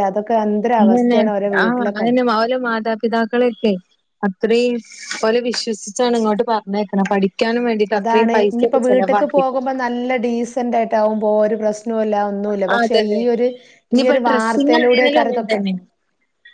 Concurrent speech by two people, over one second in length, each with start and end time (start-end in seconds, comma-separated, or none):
14.0-15.6